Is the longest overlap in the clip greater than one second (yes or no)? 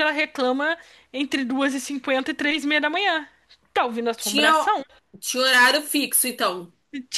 no